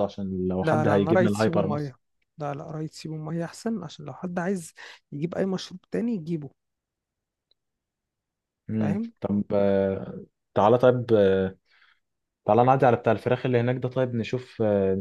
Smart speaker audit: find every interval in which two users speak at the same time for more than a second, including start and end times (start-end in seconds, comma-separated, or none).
0.6-1.9